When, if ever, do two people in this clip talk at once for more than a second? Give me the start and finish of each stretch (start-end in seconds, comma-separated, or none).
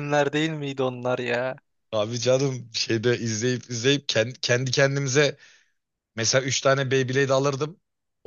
none